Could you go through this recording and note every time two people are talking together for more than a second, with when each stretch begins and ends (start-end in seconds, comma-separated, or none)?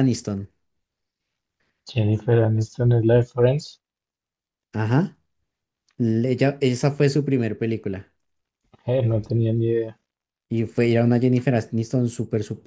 none